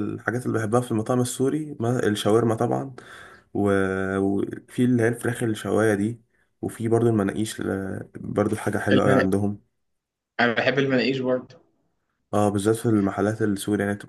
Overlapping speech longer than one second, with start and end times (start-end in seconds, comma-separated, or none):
none